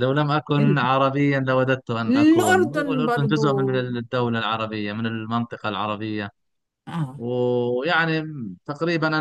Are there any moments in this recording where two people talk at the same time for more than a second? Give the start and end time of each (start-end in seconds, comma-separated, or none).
2.1-3.7